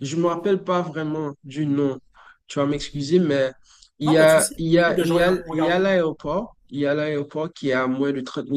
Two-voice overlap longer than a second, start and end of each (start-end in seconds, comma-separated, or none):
4.0-5.8